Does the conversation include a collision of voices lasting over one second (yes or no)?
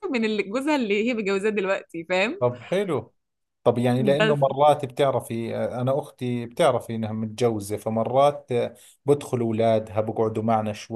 no